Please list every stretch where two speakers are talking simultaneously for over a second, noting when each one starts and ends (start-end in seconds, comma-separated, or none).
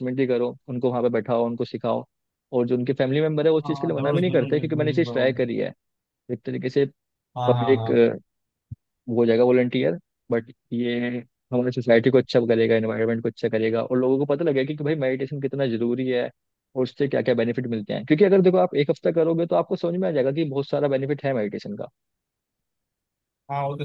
3.6-5.2